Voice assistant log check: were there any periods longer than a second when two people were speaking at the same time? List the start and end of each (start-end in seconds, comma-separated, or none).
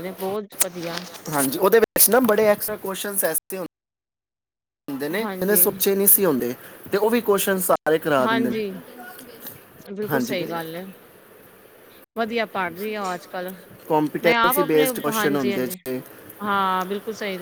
14.2-15.8